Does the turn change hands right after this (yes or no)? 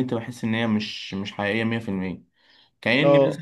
no